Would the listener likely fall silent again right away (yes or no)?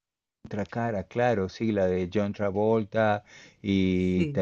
yes